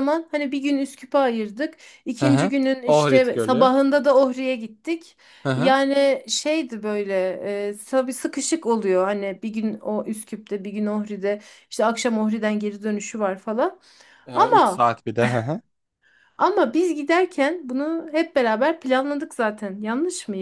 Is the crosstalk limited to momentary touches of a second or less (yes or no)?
no